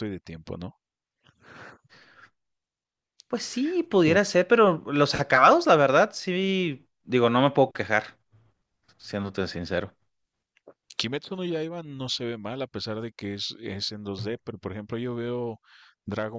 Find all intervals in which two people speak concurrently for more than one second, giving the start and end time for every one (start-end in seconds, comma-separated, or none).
none